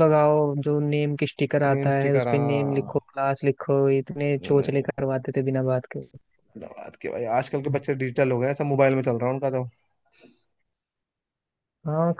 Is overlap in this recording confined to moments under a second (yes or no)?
no